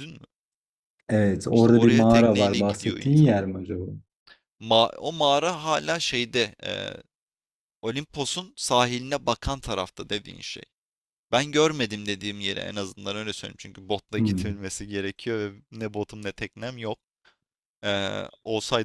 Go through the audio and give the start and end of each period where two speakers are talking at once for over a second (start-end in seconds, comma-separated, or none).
1.5-3.3